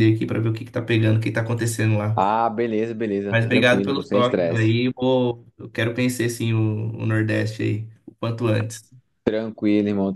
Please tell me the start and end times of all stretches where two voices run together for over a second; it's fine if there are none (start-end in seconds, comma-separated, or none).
3.3-4.7